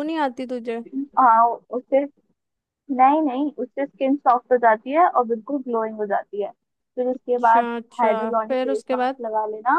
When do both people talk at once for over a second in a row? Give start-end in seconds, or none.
7.1-9.2